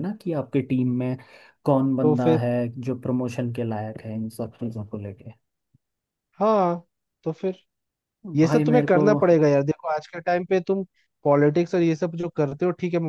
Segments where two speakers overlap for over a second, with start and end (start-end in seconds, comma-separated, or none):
none